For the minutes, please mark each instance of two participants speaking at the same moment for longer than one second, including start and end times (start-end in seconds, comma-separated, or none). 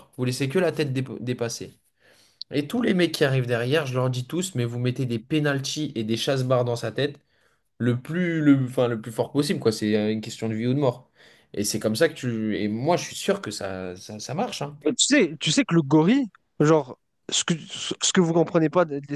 none